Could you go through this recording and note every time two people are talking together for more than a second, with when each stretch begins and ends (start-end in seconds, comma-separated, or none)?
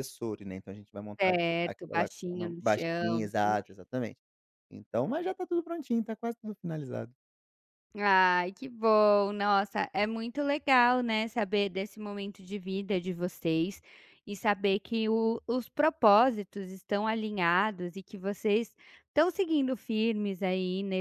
1.2-3.3